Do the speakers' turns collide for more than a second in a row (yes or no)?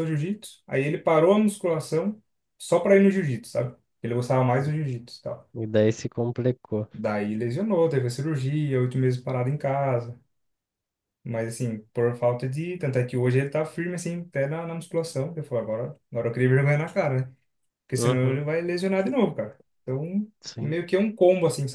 no